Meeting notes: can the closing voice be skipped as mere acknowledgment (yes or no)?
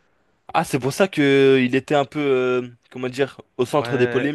no